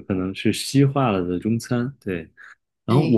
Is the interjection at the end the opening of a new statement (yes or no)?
no